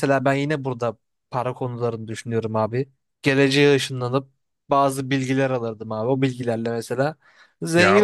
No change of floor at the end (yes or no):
no